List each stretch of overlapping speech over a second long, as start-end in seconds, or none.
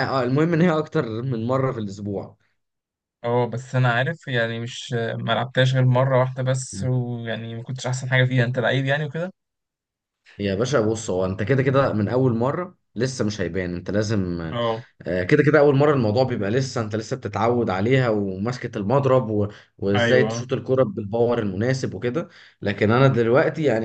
none